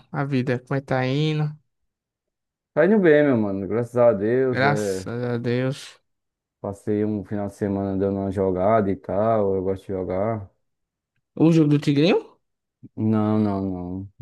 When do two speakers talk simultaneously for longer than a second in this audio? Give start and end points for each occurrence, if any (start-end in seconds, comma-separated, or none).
none